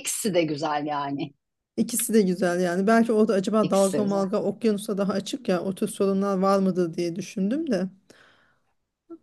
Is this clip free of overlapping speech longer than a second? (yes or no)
yes